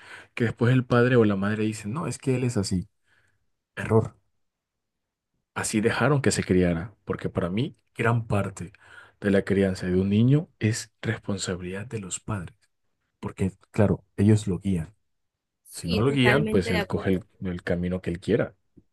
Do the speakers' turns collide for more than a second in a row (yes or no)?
yes